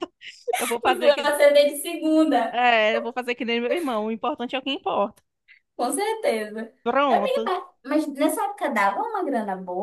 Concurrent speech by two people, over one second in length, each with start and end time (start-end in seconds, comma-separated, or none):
none